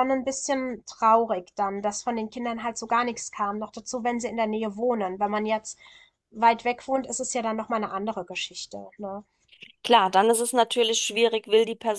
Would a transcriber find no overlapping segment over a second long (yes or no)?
yes